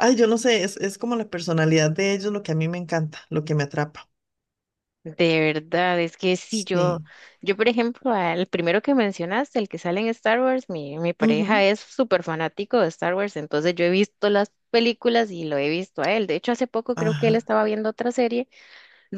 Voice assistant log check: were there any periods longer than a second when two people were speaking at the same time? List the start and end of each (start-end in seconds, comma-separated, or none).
none